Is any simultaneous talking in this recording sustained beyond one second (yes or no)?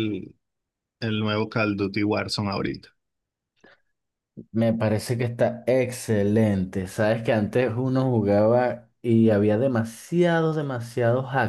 no